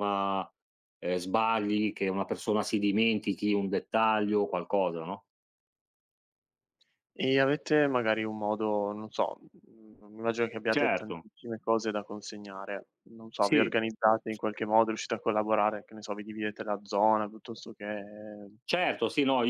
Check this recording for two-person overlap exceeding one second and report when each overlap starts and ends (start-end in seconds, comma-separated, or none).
none